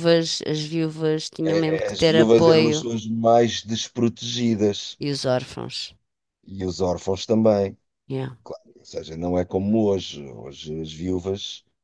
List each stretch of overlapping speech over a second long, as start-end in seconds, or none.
1.4-2.9